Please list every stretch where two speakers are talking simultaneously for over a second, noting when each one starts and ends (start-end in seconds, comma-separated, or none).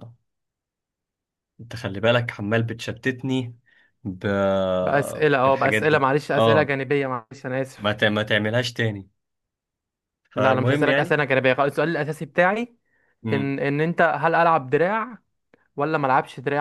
5.5-6.8